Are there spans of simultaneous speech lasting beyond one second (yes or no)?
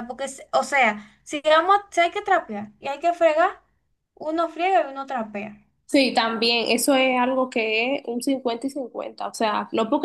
no